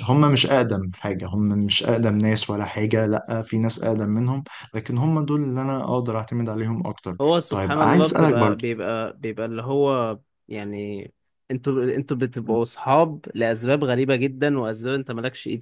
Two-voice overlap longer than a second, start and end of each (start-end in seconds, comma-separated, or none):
7.2-8.6